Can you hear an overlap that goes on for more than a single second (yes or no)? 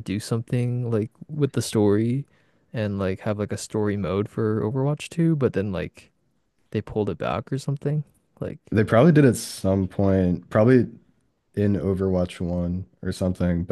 no